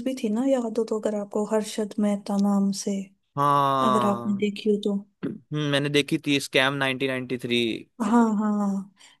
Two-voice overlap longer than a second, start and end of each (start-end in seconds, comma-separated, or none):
none